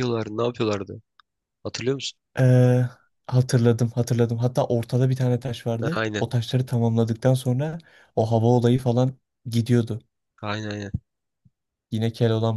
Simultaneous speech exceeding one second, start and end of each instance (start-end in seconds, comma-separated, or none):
none